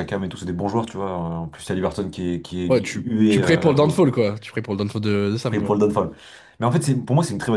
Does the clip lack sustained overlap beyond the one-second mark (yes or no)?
no